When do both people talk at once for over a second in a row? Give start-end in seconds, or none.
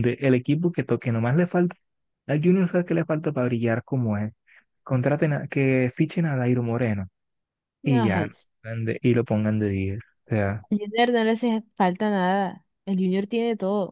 none